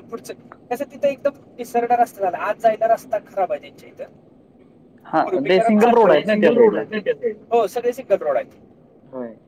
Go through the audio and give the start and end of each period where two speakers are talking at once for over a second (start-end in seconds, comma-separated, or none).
5.1-6.8